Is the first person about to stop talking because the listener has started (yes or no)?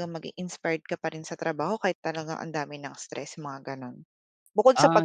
yes